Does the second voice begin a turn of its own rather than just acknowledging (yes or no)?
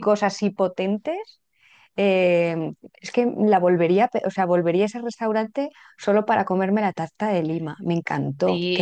yes